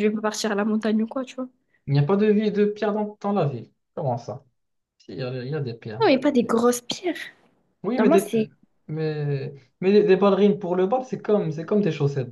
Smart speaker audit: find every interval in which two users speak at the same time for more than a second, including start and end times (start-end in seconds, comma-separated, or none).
none